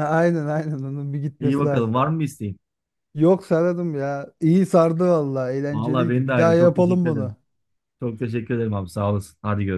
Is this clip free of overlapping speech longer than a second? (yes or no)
no